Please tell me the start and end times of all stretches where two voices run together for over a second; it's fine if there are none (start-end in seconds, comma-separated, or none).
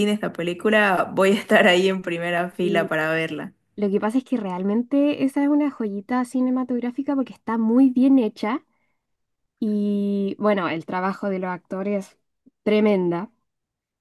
none